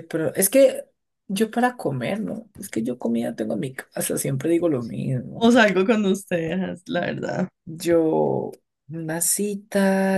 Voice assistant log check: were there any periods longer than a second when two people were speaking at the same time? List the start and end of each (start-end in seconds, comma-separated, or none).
none